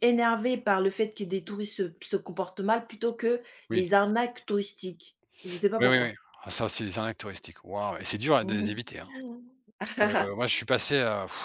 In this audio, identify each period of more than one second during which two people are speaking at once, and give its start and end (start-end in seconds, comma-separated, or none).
none